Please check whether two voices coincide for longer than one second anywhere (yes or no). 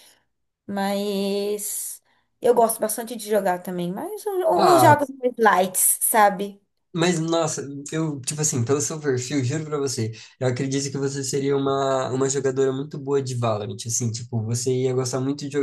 no